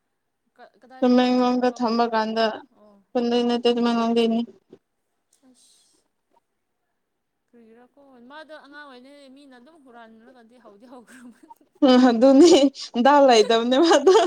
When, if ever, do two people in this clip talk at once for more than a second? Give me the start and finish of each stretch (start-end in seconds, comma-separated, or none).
1.0-2.4